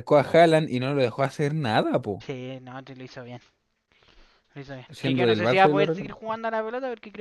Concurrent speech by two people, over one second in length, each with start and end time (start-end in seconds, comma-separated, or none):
4.9-6.4